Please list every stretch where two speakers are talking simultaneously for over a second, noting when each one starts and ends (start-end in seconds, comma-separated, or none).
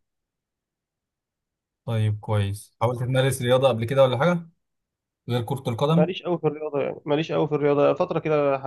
none